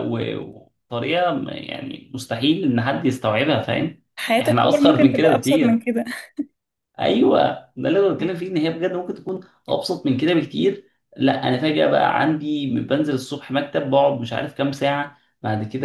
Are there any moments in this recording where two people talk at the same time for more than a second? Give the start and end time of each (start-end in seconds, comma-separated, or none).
4.4-5.9